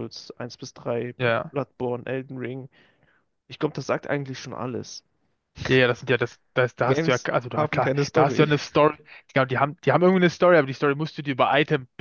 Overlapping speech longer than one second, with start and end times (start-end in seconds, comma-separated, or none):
6.8-8.5